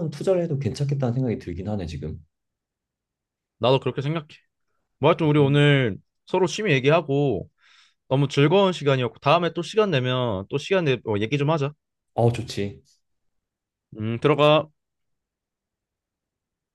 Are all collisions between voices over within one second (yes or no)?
yes